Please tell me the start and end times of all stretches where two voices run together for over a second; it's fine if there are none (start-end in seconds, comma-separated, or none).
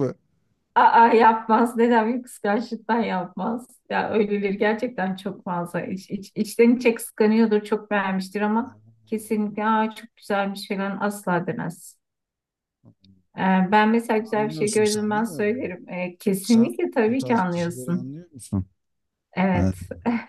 14.3-15.8, 16.4-18.1